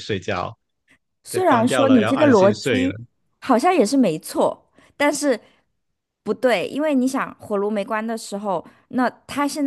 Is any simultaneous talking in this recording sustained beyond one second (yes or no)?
yes